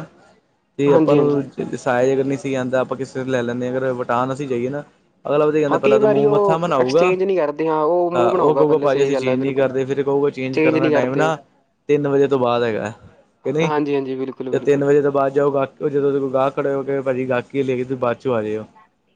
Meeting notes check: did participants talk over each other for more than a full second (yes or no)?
yes